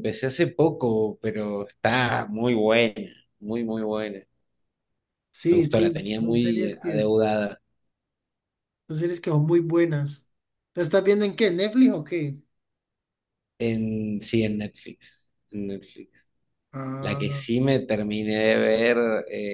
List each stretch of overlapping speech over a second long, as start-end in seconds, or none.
5.5-7.0